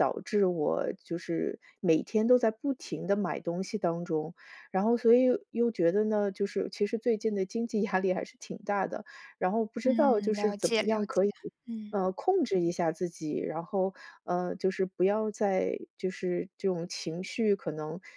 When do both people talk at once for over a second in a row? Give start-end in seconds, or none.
9.8-11.3